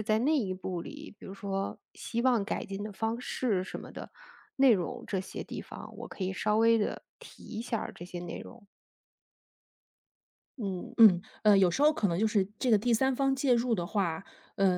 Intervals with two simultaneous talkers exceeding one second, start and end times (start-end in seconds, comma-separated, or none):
none